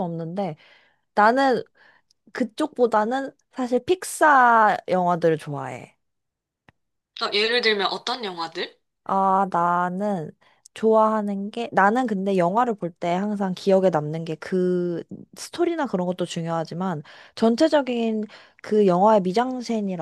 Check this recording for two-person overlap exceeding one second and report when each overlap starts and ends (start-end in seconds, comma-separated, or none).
none